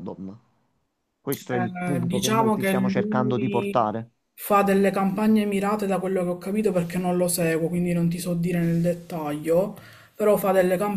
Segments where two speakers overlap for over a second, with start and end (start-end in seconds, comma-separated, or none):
1.5-3.9